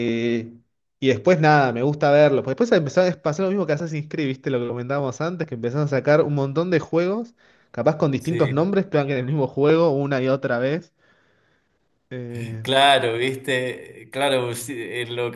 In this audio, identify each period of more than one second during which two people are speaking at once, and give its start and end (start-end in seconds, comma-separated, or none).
none